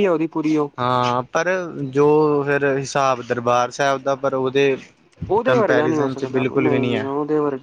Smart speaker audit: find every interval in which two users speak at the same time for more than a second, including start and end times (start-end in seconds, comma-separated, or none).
5.4-7.1